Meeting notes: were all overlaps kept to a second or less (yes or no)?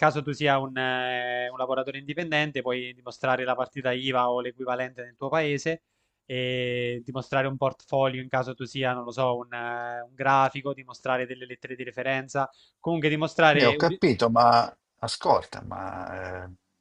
yes